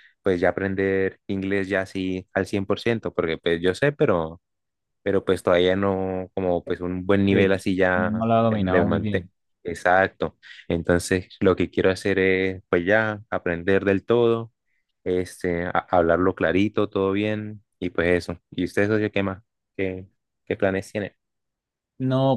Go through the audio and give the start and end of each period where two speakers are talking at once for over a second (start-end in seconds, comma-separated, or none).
7.3-9.3